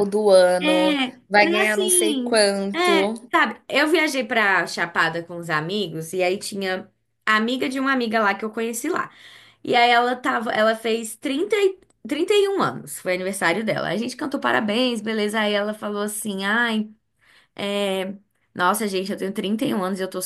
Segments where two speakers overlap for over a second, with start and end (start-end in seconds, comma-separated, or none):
1.4-2.9